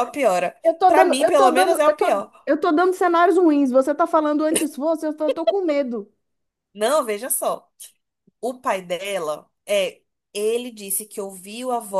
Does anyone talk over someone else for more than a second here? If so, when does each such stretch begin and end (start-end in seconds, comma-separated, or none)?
0.6-2.3